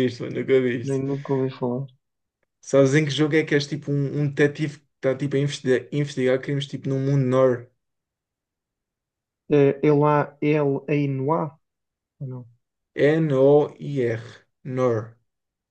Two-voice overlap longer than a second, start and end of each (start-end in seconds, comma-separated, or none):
none